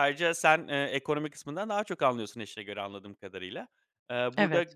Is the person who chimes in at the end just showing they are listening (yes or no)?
yes